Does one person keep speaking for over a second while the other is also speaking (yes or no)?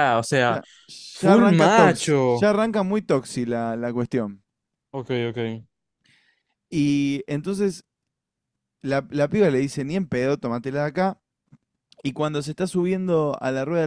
yes